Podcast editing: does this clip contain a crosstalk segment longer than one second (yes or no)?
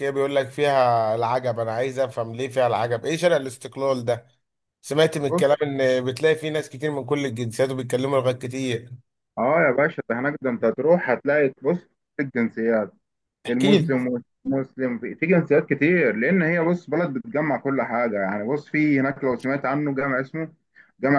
no